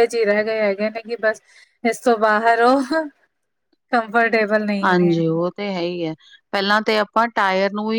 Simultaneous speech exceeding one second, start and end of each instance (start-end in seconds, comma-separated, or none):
none